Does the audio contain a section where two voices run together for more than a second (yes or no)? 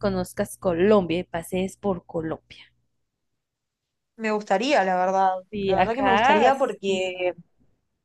yes